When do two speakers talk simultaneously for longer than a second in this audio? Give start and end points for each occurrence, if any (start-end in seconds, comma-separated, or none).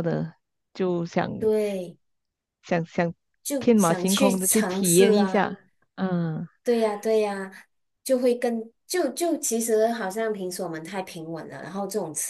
3.6-5.5